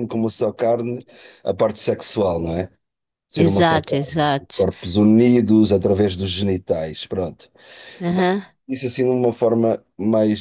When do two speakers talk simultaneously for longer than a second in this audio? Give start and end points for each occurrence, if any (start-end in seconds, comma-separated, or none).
3.4-4.7